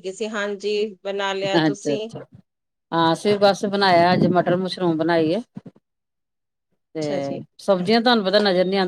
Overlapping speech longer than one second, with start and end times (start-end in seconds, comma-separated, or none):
none